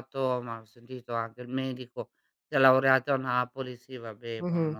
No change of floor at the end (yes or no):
no